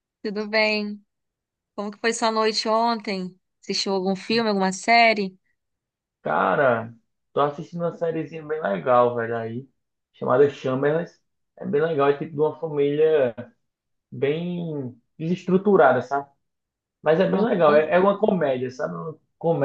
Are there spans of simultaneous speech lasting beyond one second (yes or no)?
no